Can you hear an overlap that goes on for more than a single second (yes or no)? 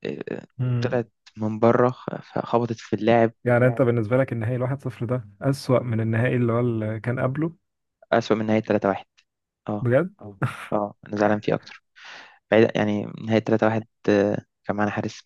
no